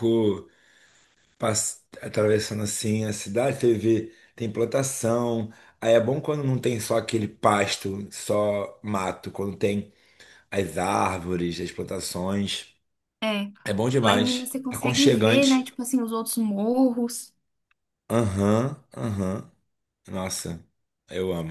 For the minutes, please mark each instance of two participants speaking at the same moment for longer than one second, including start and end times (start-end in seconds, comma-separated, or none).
14.0-15.7